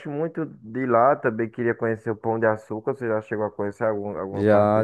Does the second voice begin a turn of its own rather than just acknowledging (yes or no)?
yes